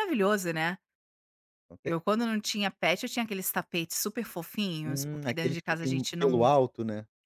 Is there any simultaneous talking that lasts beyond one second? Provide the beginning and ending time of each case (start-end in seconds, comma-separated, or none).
4.8-6.5